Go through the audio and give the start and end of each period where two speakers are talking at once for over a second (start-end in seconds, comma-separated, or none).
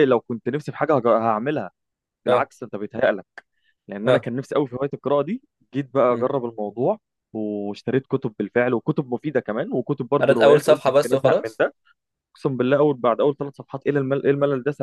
10.2-11.6